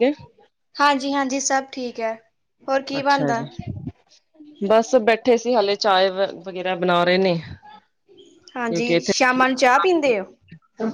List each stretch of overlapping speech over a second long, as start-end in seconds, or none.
none